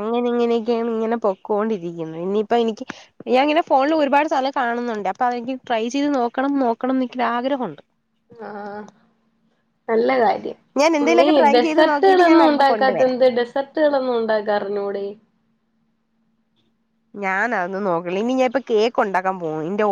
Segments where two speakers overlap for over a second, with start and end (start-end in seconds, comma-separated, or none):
11.2-13.0